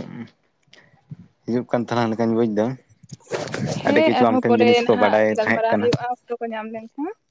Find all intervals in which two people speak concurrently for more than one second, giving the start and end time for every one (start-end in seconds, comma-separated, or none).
3.6-5.9